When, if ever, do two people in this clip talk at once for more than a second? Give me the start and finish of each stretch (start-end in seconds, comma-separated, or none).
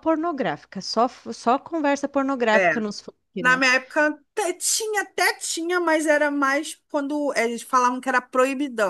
none